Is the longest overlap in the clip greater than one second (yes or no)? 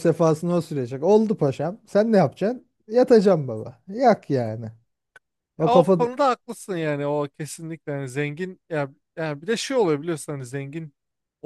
no